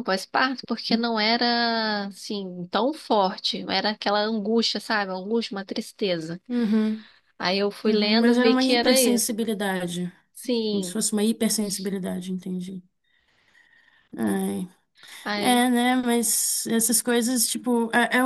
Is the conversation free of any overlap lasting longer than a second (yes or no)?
no